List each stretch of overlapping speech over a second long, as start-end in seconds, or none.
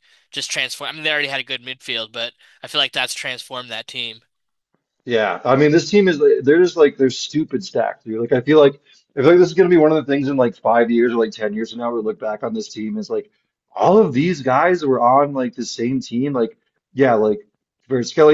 none